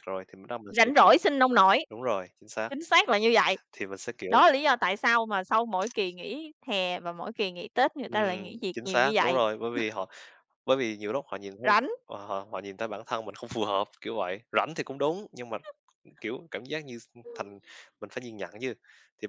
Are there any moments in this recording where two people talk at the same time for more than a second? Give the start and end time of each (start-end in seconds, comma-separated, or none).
8.1-9.4